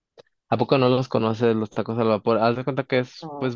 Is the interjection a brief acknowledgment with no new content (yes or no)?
yes